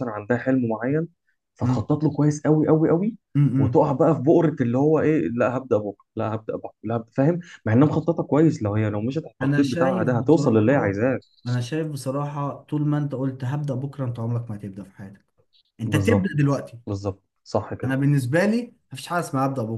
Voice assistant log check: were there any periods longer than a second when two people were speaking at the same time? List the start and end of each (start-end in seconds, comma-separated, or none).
9.4-10.9